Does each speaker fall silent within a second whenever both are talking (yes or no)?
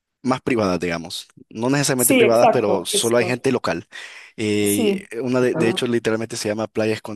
no